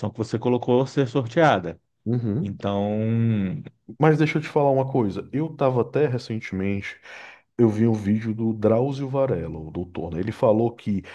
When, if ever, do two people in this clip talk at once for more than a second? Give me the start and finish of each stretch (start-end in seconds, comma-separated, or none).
none